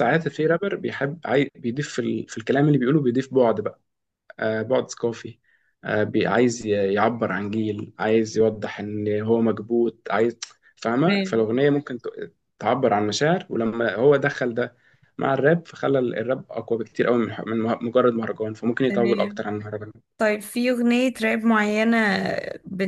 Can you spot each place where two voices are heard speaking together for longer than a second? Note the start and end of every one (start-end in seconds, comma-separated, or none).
none